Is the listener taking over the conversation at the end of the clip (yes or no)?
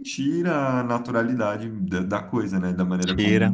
yes